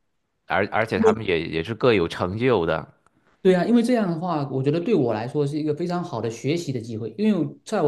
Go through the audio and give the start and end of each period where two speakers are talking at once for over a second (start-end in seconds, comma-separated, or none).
none